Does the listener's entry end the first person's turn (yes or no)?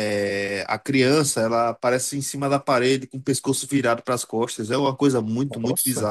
yes